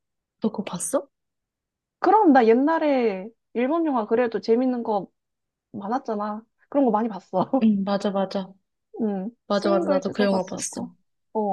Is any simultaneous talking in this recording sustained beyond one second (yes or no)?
yes